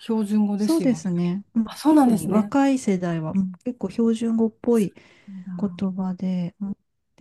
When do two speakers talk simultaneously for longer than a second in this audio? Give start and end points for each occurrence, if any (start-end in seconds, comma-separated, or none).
0.6-2.5